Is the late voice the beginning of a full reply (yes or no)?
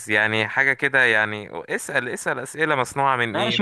yes